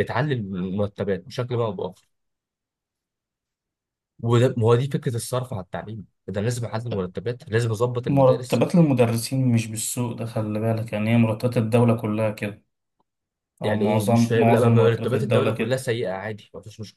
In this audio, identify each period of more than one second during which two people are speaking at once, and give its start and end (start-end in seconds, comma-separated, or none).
13.6-15.8